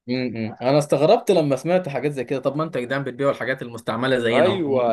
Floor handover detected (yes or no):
yes